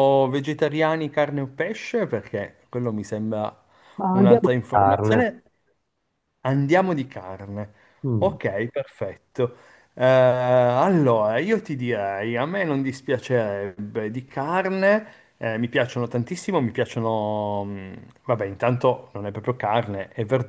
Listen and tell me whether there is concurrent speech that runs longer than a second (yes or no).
yes